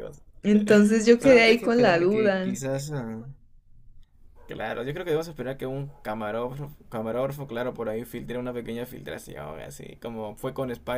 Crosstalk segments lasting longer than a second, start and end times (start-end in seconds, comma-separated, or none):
1.2-2.6